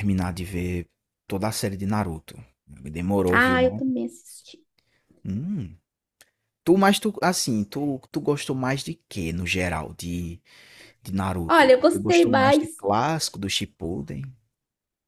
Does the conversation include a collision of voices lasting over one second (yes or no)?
yes